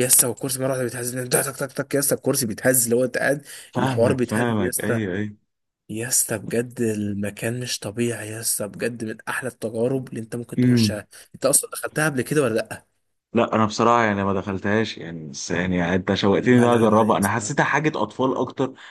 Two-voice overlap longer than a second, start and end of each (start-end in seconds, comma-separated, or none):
3.7-5.0, 16.3-17.5